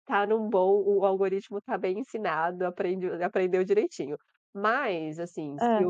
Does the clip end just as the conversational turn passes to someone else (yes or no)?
no